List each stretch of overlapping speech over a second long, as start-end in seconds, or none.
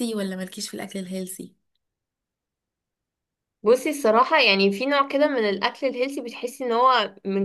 none